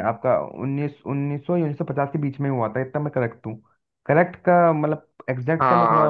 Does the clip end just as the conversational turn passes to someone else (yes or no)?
yes